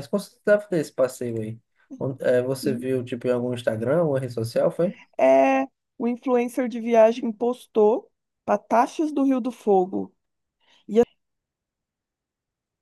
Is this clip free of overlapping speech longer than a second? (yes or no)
yes